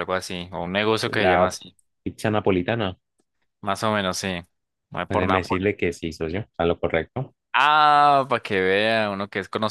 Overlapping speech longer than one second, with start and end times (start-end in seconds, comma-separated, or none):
none